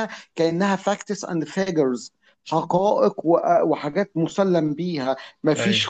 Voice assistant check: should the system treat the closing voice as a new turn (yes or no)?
no